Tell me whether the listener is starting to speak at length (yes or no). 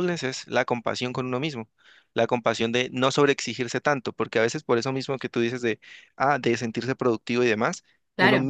no